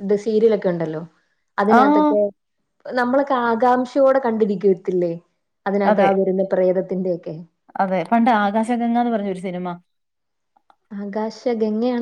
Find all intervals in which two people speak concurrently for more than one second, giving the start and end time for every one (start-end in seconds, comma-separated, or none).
none